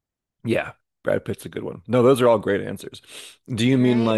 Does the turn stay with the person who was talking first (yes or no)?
no